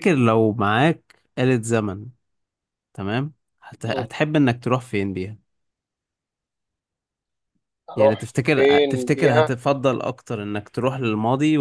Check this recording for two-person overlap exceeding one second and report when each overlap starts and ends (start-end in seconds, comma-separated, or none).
8.0-9.6